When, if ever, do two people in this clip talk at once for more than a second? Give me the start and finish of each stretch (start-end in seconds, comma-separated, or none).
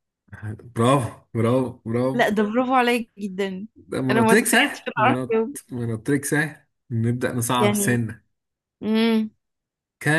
4.1-5.6